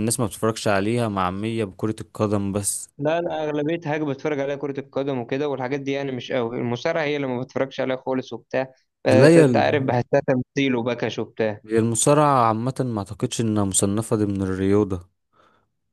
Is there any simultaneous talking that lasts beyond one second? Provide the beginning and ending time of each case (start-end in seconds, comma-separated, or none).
none